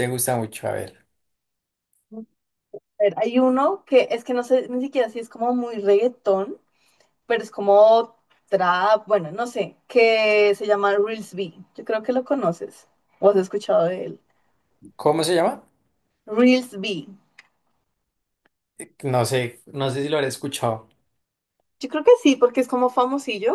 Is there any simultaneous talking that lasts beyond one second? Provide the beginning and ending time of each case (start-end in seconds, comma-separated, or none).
none